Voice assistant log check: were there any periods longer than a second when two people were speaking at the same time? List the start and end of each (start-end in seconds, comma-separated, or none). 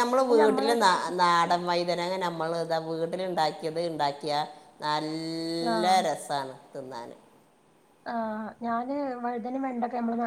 none